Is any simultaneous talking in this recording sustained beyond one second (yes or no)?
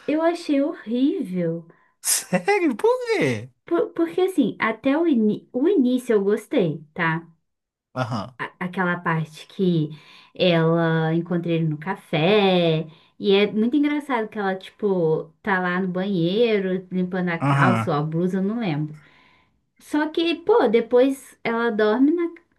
no